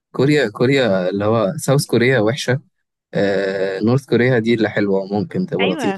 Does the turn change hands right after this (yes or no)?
yes